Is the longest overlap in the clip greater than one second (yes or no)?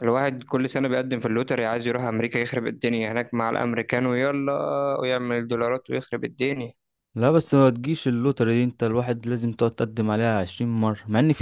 no